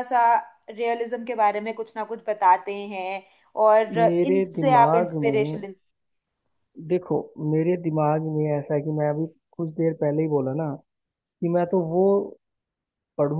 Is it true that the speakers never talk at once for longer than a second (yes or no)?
no